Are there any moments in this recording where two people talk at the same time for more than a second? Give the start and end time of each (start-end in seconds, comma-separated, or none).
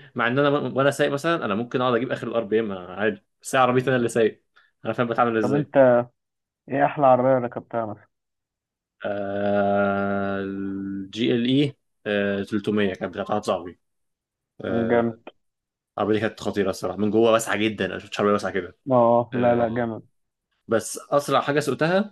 none